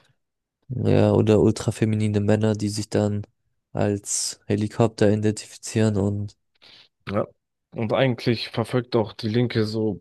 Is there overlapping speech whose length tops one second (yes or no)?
no